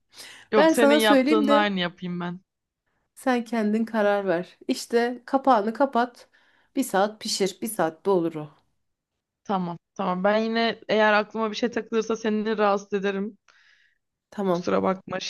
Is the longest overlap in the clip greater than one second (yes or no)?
yes